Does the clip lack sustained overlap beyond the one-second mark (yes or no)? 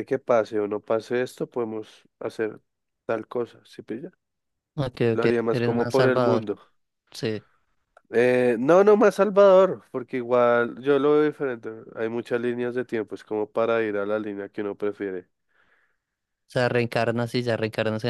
no